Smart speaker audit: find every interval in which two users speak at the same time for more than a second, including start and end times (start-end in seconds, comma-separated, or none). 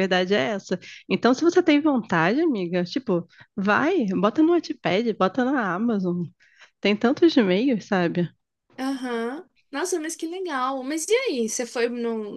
none